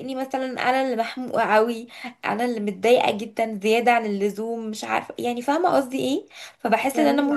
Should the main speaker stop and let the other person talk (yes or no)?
no